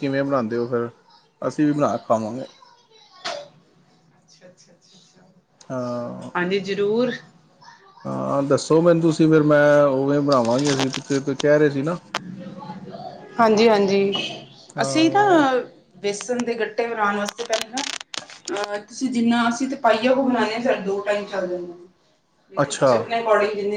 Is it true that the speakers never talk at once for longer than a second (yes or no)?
yes